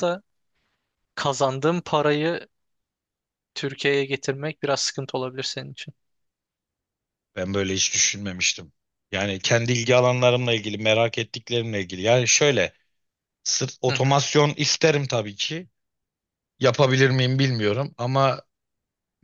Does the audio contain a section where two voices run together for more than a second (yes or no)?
no